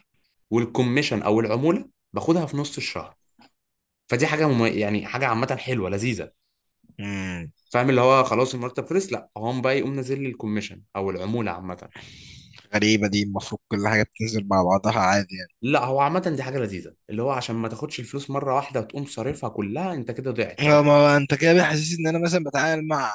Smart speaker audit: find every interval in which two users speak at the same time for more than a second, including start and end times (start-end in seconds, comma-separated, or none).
none